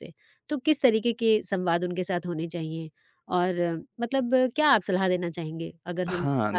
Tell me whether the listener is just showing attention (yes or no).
no